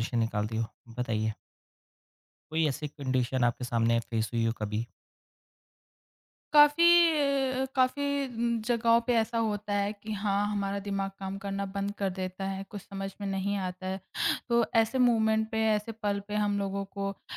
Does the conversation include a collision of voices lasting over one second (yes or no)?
no